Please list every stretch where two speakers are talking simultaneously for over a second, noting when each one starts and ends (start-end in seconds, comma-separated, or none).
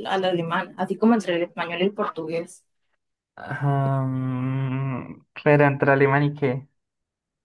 none